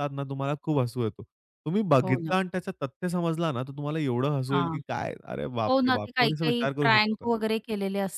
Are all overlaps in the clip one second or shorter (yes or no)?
no